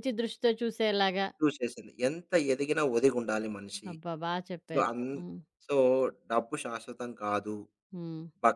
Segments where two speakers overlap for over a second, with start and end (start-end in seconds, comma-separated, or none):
none